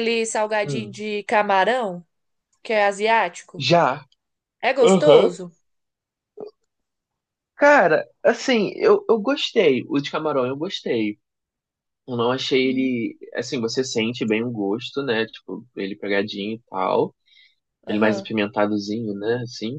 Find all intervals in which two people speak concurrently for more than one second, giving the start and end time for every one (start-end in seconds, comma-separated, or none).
none